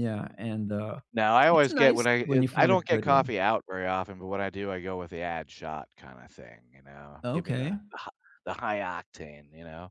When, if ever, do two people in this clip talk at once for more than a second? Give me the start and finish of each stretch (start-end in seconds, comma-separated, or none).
1.5-3.3